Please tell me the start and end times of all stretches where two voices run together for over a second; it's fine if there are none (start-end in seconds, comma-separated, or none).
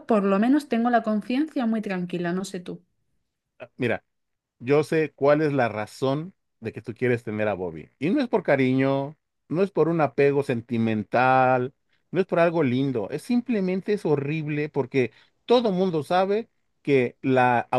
none